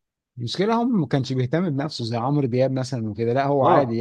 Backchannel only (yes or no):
no